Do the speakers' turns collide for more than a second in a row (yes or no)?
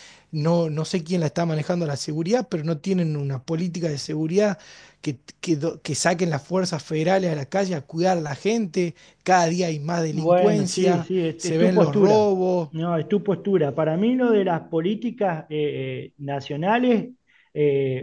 yes